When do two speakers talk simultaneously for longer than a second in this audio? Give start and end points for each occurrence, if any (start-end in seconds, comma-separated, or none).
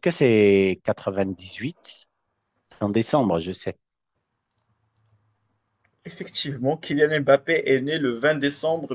none